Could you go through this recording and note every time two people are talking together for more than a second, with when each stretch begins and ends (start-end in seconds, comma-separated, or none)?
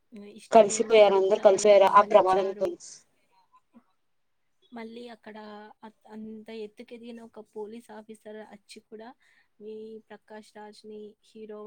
0.6-2.7